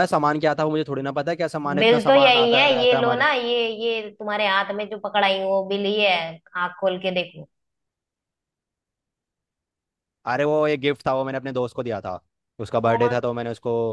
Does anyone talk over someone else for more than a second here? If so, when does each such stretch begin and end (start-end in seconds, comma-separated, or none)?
1.8-3.3